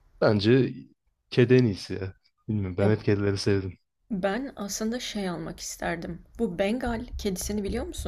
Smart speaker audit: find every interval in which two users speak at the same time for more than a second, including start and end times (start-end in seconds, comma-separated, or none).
none